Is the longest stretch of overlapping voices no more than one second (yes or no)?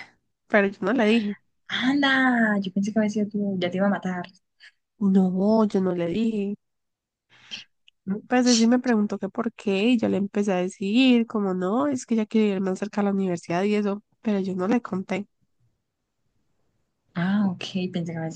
yes